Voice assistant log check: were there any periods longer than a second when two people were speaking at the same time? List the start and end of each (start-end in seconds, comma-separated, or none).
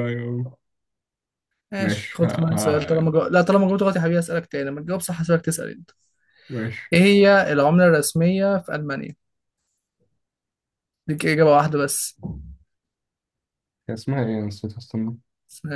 1.8-3.1